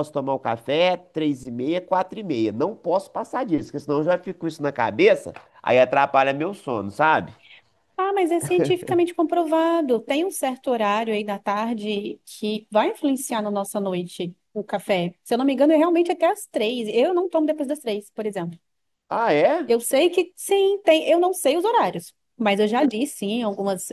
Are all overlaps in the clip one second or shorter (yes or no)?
yes